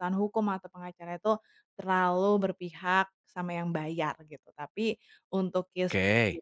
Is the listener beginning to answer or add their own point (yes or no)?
no